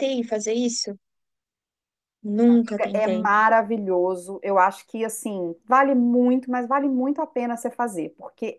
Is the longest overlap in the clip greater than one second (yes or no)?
no